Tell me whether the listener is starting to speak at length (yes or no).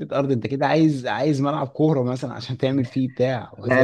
no